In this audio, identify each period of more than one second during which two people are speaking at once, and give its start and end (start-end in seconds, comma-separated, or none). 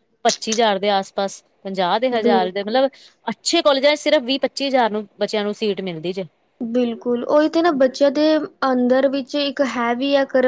none